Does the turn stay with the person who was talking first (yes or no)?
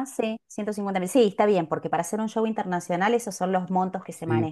no